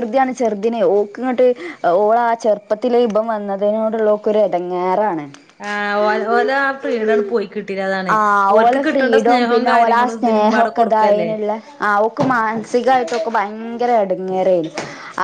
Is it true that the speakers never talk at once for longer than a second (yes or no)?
no